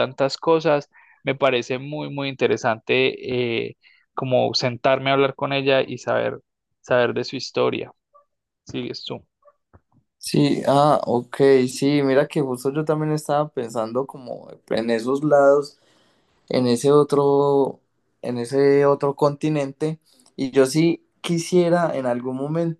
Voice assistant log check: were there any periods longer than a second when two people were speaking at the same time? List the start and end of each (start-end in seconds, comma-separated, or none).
none